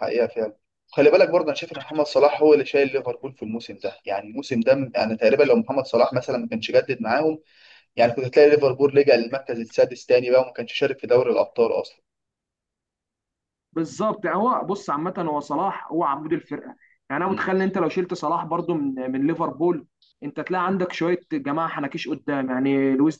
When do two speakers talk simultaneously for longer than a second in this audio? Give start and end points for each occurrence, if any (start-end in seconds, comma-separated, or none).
none